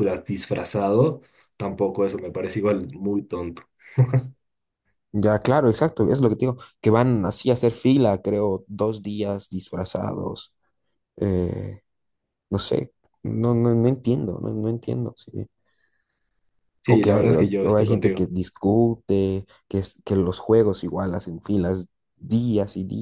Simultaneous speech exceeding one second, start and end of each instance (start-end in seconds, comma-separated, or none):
16.9-18.3